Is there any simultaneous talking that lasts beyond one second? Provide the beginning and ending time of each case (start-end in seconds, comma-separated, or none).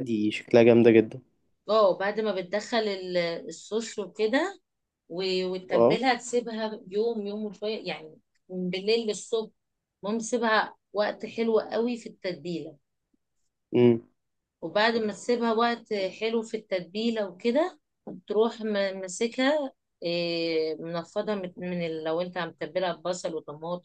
none